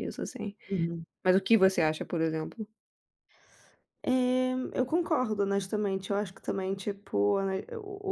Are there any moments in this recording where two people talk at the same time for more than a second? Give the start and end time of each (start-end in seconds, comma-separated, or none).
none